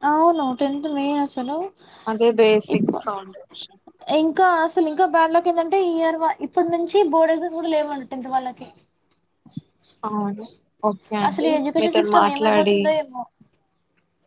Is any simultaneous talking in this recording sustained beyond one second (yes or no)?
yes